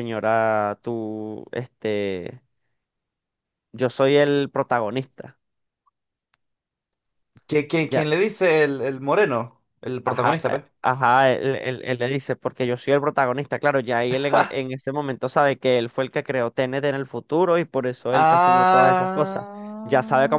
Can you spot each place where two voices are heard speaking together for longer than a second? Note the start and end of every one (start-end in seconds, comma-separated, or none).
18.1-19.4